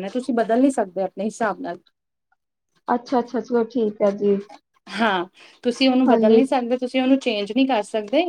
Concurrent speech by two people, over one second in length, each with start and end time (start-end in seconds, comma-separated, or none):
none